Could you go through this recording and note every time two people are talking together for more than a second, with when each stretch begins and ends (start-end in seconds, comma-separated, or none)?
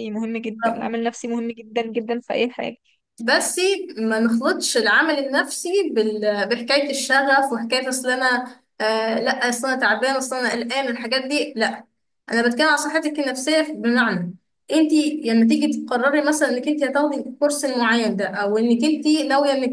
none